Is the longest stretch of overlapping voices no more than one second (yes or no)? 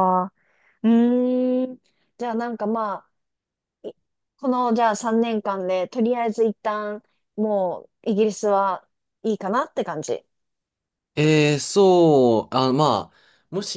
yes